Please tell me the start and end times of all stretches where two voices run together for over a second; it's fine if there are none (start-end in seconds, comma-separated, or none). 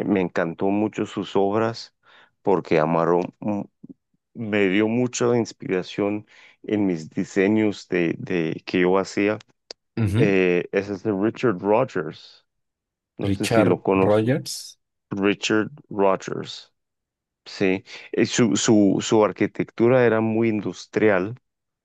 13.2-14.5